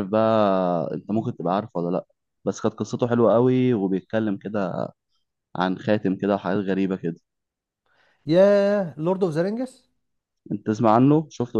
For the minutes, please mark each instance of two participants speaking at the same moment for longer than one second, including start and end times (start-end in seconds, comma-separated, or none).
none